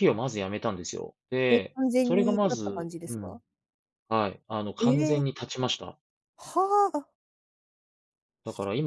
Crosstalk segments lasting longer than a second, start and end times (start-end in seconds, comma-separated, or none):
1.5-3.4